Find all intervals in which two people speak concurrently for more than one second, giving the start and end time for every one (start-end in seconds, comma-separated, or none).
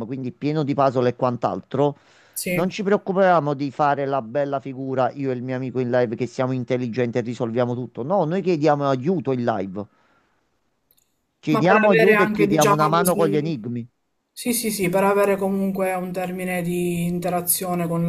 11.5-13.5